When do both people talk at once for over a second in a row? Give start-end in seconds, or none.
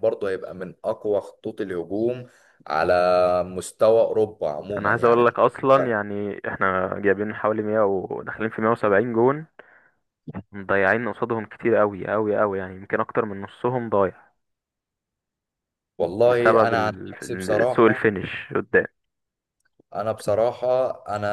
16.3-18.1